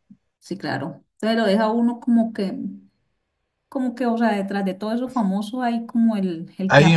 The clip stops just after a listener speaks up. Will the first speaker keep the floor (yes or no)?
no